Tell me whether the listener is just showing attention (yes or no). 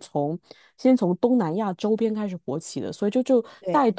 yes